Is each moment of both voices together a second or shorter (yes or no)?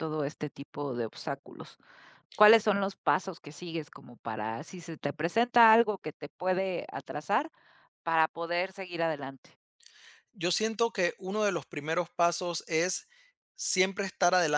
yes